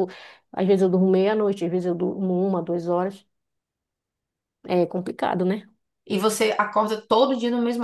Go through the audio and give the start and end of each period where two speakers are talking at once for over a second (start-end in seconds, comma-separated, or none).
none